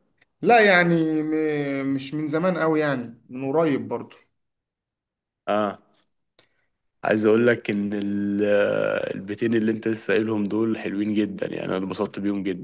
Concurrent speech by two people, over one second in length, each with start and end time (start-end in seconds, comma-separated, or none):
none